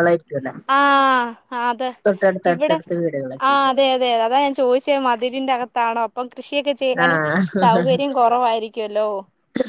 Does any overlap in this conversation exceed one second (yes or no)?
no